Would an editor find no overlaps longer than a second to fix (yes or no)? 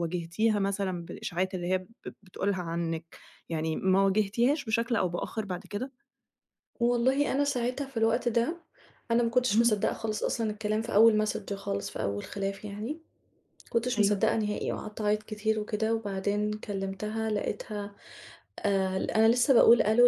yes